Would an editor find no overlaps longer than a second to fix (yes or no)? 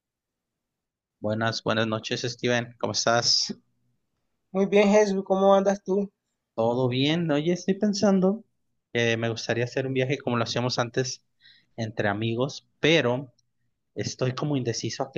yes